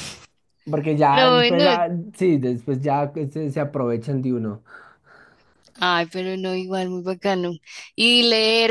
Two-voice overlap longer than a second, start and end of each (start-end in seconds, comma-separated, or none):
none